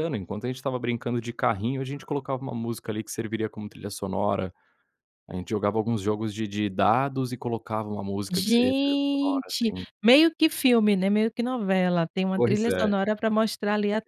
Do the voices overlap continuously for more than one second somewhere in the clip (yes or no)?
yes